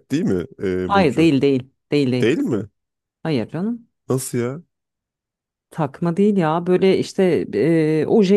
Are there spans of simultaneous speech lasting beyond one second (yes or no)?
no